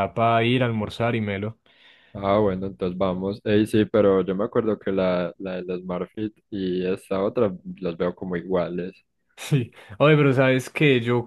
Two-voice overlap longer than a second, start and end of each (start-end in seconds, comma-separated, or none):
none